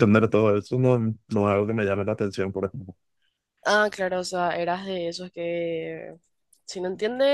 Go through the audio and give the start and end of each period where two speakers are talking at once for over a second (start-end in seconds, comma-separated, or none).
none